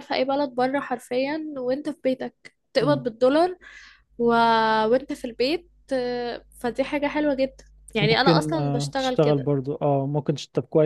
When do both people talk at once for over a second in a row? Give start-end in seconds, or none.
8.0-9.5